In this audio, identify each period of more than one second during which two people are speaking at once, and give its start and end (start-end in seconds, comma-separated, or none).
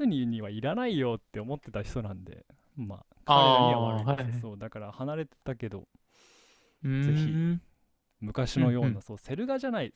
3.2-4.5